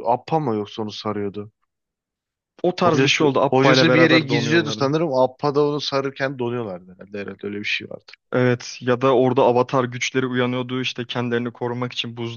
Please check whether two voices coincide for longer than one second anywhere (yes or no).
yes